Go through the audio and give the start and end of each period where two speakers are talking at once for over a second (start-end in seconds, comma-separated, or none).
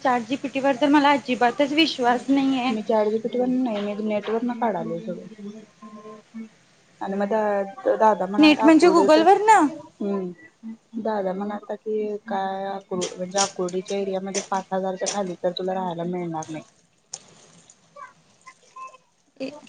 8.4-9.6